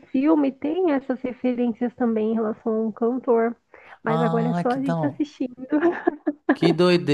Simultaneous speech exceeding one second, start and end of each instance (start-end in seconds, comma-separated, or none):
4.1-5.3